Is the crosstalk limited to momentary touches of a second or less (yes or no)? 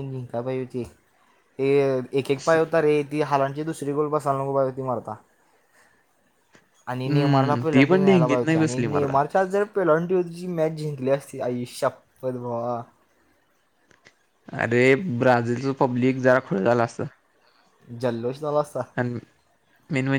no